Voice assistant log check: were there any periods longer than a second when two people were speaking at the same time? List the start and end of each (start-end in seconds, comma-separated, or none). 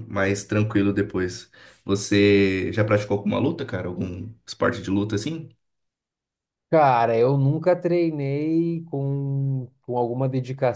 none